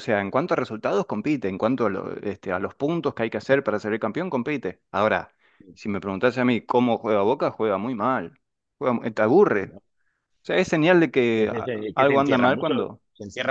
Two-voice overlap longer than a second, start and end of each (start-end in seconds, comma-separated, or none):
11.3-12.7